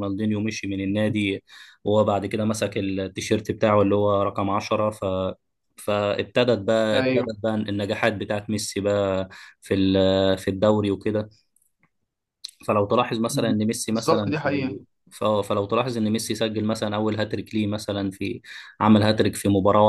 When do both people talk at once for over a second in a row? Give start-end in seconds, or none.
13.3-14.8